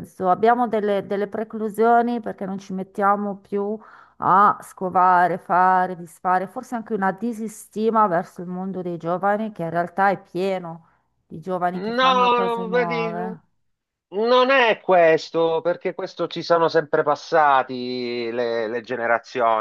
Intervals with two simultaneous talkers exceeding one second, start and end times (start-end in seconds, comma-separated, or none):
11.7-13.4